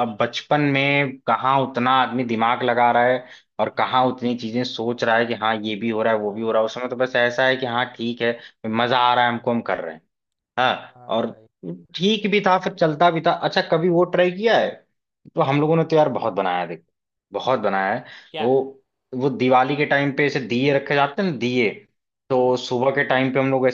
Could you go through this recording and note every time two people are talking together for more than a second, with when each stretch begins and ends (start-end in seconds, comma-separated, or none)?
none